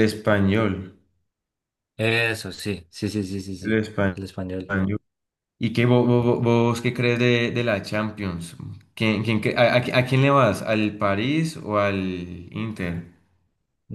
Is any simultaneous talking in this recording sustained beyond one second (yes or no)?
no